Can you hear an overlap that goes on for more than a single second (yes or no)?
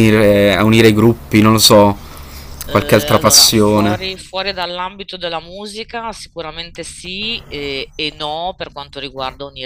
yes